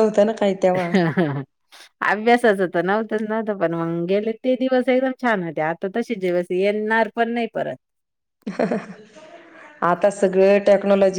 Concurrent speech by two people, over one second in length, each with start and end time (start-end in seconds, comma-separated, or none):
none